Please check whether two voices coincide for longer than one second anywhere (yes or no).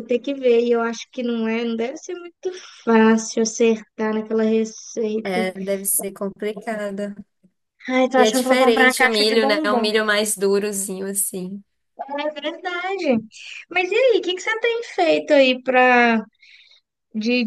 yes